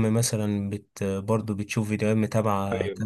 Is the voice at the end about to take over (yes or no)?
no